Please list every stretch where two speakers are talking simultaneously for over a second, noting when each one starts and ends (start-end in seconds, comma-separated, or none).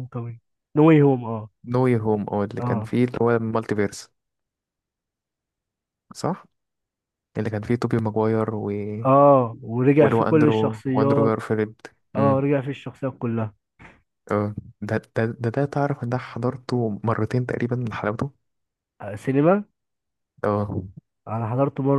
10.0-11.3